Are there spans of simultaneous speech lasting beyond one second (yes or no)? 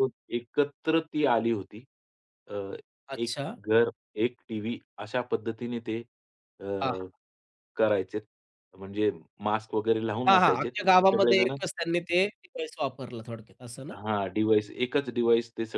yes